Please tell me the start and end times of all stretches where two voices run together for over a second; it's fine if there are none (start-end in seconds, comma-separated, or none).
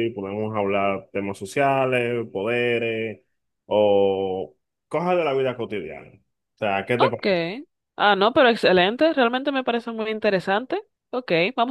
none